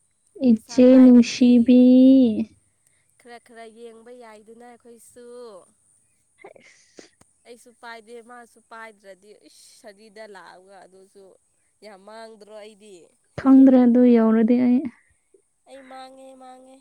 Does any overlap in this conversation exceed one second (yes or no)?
yes